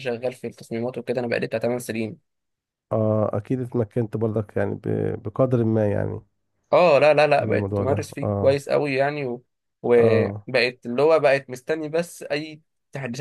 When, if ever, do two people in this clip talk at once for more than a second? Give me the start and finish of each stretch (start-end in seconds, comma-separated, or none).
7.4-8.6